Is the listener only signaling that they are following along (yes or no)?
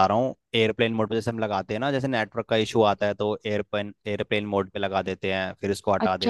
no